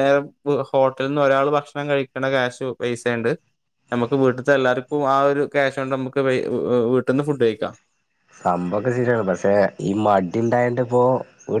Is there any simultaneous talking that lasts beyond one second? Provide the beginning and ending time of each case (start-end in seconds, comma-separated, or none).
none